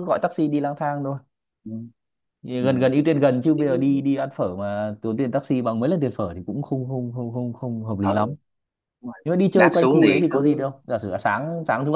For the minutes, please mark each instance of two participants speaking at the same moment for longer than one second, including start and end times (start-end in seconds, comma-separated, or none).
9.2-10.7